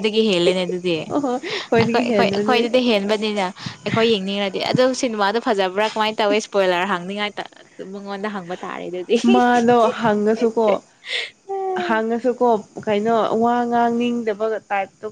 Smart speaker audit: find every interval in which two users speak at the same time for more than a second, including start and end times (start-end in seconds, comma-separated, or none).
1.1-2.6